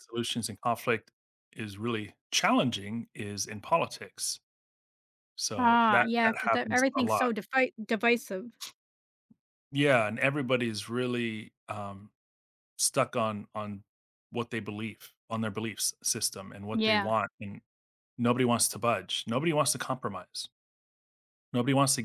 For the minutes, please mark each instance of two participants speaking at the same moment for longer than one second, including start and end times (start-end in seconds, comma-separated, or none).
5.6-7.3